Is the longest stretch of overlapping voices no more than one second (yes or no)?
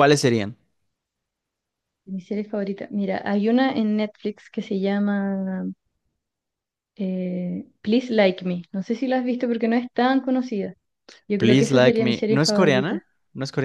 no